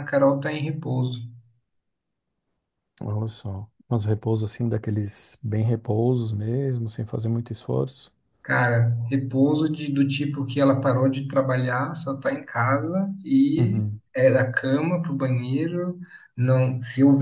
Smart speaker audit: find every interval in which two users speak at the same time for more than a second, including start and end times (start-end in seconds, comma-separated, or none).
none